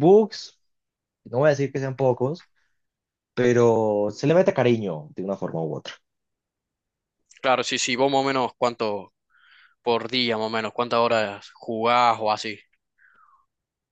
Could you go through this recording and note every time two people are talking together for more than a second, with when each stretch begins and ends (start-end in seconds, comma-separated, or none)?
none